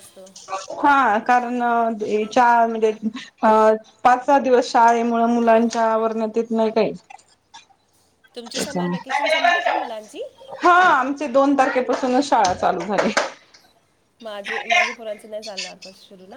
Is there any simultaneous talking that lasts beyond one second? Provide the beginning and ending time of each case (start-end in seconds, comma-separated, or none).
none